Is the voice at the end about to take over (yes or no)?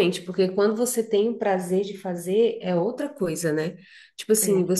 no